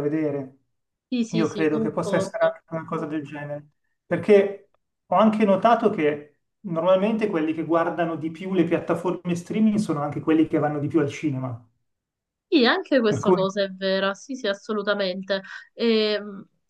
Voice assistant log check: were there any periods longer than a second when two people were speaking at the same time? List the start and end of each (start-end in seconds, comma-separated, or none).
1.3-2.6